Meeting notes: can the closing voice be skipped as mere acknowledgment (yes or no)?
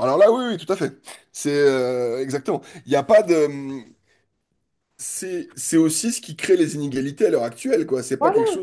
yes